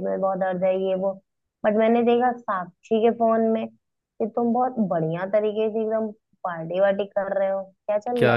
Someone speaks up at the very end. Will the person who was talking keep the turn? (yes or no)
no